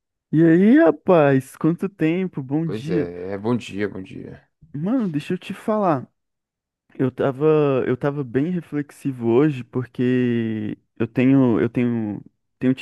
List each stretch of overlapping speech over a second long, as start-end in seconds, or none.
none